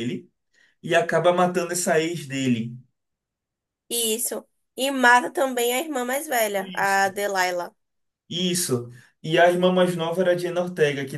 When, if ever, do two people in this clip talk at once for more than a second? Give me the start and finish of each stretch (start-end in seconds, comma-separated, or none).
none